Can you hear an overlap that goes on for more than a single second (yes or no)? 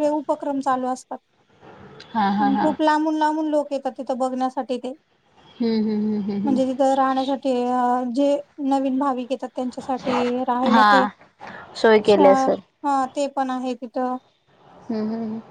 no